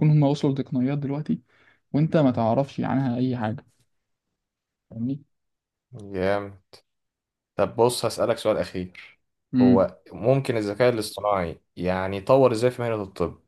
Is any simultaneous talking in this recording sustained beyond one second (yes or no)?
no